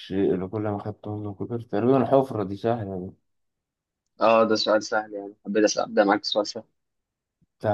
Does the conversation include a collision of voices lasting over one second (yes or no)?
no